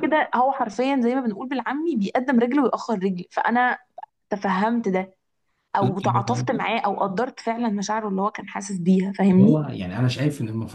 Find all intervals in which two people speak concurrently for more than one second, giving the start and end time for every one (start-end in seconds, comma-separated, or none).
none